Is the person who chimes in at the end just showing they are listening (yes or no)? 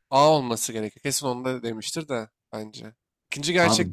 yes